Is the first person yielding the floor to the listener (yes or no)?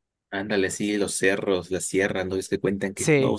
no